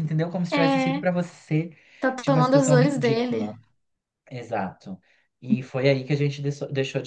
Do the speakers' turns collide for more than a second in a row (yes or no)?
yes